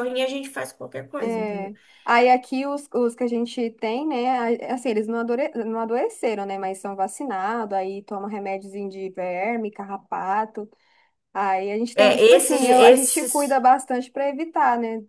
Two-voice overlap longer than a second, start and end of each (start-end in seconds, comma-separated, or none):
11.9-13.6